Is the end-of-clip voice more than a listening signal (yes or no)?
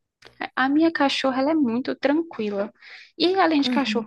no